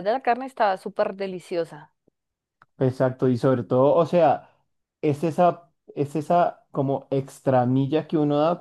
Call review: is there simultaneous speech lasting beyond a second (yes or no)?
no